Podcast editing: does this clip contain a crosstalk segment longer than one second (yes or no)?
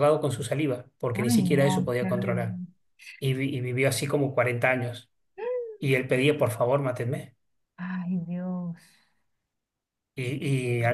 yes